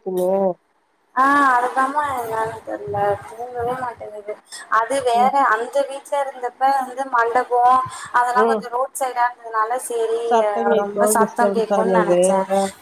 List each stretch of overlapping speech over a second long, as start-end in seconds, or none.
10.8-12.1